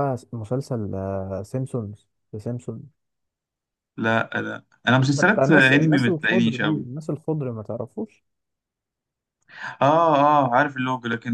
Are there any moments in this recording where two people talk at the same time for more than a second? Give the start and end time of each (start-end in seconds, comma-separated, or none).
5.2-6.8